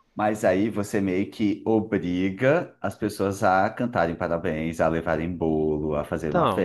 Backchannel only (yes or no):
no